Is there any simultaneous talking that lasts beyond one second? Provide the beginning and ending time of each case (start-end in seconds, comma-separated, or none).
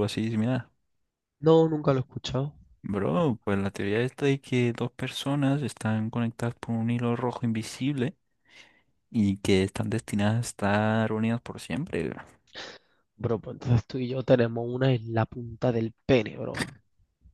none